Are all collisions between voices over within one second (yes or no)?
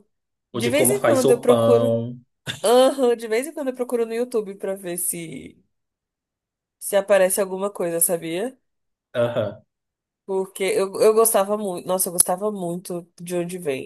no